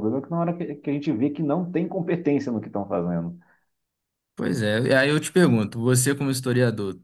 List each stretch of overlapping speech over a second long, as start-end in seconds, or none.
none